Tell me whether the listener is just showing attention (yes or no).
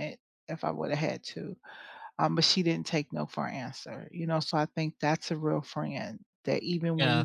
no